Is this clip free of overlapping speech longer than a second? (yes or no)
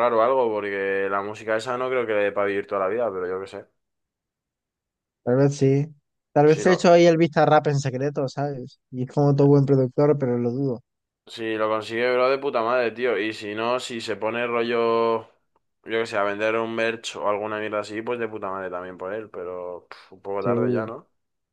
yes